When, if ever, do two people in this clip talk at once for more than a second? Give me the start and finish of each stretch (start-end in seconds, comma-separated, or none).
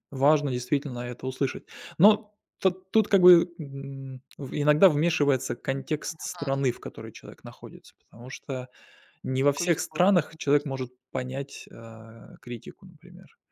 9.6-10.8